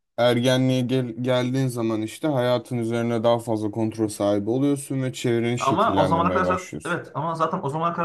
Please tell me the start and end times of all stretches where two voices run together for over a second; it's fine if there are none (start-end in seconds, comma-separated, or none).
5.6-7.0